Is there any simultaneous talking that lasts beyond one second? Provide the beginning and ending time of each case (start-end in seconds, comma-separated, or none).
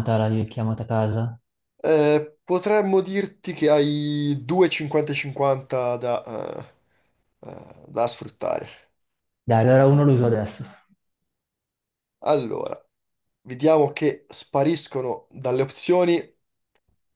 none